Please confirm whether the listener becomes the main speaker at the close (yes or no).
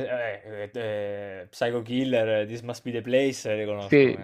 yes